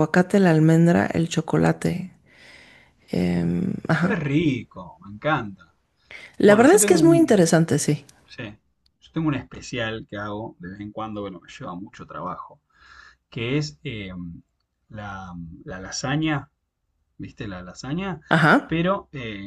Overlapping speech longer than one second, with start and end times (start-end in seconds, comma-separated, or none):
6.5-7.7